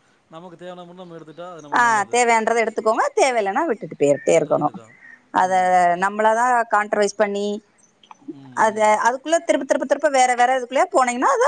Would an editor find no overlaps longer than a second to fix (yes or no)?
yes